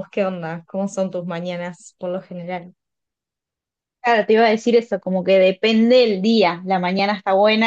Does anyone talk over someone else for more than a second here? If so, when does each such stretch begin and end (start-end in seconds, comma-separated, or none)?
none